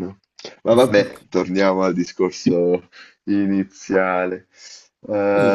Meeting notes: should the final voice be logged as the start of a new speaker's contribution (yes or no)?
yes